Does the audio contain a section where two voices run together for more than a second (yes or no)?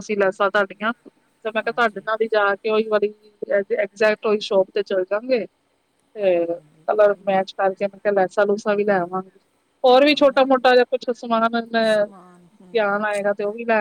yes